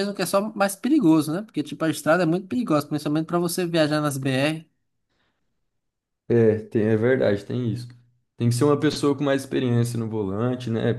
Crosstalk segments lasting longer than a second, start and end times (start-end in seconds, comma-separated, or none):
none